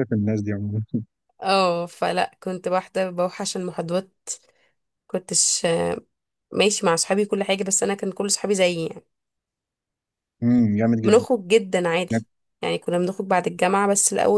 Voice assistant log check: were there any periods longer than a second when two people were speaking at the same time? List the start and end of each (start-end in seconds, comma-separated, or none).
none